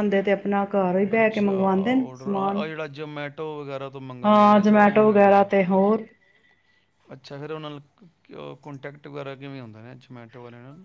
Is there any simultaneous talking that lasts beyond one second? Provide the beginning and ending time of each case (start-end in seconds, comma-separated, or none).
1.1-2.6, 4.2-5.5